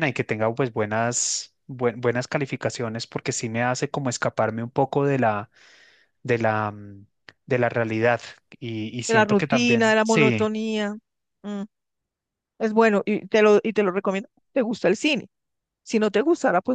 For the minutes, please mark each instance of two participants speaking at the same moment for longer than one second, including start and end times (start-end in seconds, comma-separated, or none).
9.1-10.5